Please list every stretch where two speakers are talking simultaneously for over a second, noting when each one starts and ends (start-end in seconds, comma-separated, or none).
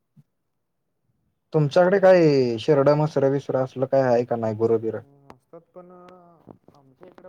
none